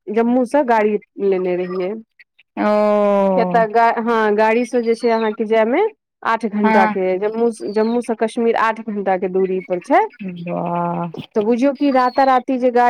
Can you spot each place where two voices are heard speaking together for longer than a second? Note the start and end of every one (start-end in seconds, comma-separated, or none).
none